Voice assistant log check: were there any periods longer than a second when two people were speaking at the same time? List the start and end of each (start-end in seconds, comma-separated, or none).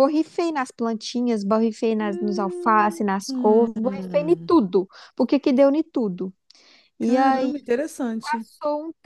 2.0-4.5